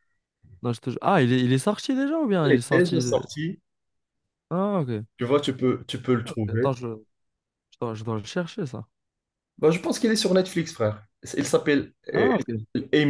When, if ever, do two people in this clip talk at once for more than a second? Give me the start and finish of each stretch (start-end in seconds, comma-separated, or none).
none